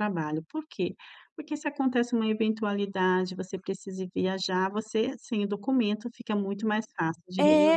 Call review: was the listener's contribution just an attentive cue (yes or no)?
no